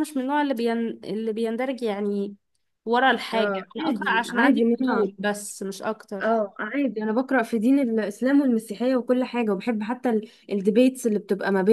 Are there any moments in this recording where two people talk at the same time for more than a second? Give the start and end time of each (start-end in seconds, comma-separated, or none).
3.3-5.1